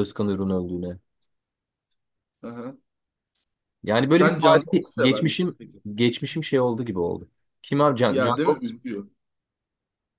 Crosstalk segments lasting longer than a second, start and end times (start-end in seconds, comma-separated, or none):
4.2-5.6